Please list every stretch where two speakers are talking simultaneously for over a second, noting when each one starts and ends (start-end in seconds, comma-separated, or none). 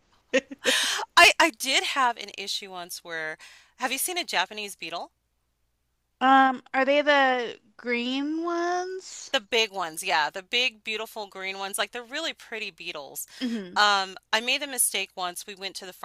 none